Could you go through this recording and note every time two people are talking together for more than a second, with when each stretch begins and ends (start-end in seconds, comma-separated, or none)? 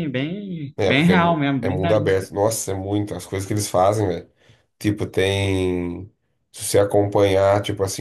0.8-2.3